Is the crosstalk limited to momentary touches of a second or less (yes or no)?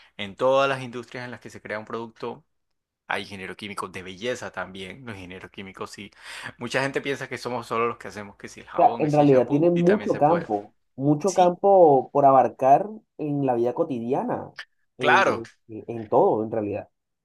no